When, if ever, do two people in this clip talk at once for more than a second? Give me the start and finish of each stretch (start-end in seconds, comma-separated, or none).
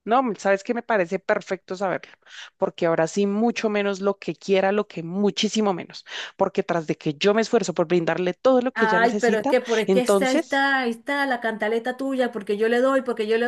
8.7-10.7